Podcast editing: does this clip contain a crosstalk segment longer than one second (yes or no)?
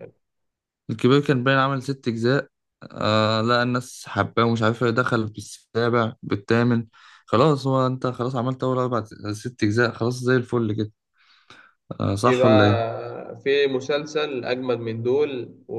no